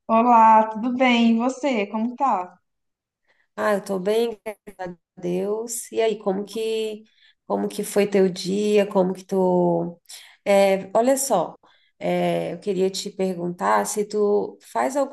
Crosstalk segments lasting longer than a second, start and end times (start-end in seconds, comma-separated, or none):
none